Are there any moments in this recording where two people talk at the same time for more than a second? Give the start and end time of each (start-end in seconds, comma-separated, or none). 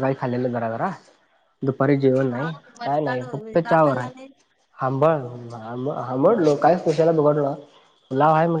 2.3-4.1